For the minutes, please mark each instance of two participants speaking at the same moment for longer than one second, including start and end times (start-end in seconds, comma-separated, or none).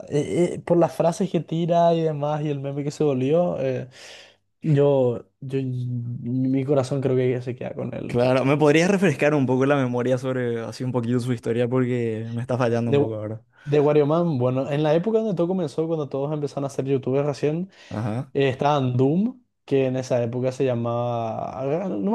none